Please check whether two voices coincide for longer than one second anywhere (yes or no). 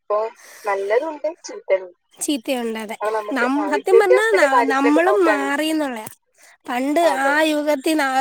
yes